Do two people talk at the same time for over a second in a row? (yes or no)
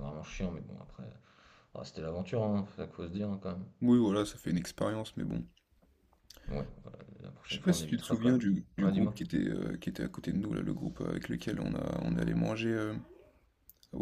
yes